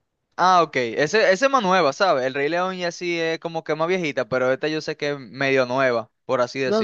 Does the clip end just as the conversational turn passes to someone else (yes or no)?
yes